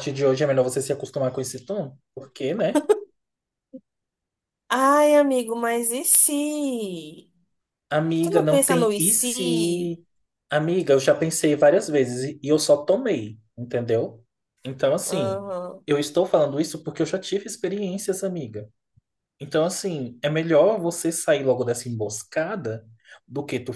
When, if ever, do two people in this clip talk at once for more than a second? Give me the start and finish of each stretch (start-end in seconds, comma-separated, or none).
8.2-9.9